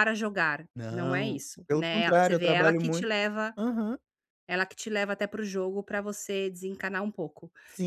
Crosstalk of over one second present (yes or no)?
yes